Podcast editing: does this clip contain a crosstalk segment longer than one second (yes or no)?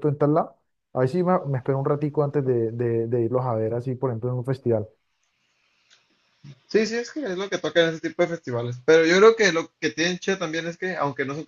no